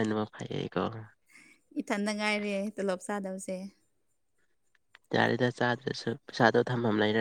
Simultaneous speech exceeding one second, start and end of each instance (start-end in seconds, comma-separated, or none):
none